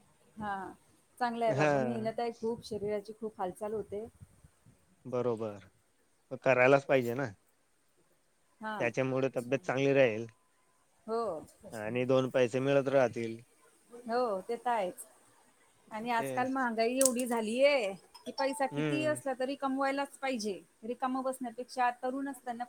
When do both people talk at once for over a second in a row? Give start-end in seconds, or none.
none